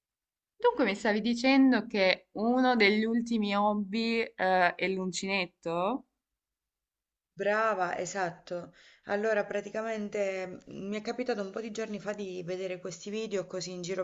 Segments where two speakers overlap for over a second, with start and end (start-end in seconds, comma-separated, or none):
none